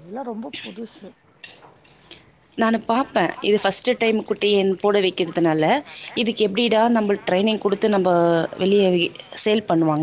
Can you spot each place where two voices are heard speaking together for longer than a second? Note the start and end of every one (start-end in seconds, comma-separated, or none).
none